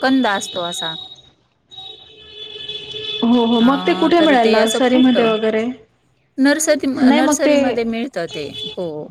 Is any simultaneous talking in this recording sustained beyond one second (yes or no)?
yes